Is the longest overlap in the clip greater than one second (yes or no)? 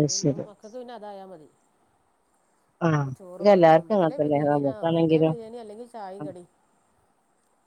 yes